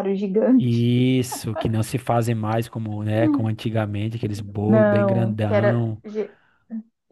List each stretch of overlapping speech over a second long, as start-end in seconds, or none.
4.7-6.0